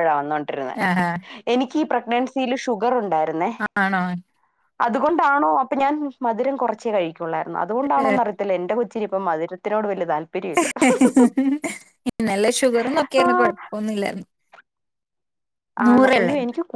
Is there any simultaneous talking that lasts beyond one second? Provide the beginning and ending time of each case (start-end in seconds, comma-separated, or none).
none